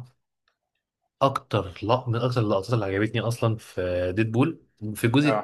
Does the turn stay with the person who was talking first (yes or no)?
yes